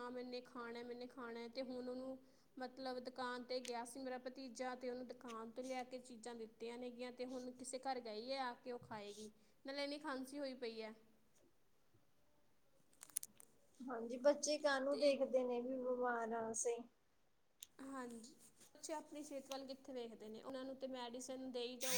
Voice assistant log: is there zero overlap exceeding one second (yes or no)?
yes